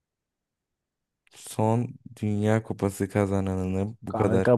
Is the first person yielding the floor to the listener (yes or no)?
yes